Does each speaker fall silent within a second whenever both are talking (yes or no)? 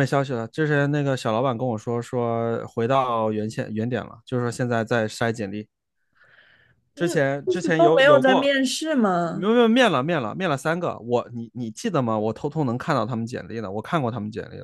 no